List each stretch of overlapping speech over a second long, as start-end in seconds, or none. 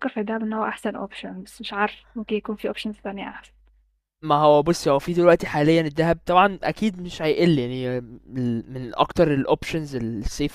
none